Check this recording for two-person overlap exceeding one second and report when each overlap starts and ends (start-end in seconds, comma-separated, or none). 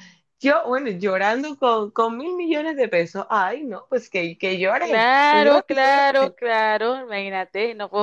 4.8-6.4